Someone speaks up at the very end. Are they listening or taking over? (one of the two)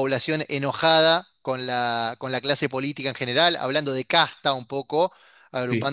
listening